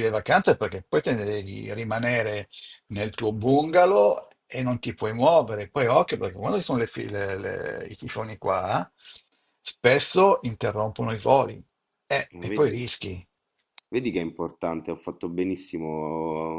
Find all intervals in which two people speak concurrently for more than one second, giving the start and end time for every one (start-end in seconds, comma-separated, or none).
none